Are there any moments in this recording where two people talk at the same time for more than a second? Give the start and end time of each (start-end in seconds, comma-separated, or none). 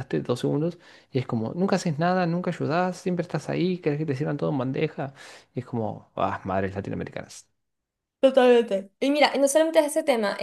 none